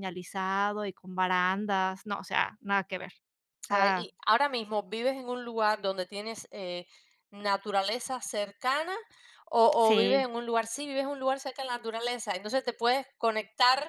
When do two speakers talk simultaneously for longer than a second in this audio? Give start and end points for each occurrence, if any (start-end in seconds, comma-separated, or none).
none